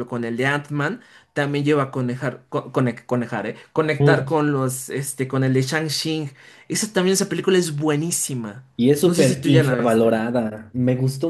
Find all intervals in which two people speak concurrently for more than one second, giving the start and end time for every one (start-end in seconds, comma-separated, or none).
9.0-10.2